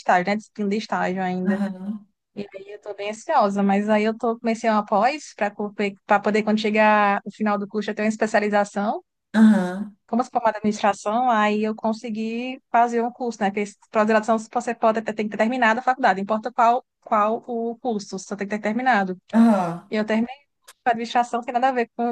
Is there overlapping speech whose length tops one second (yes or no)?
no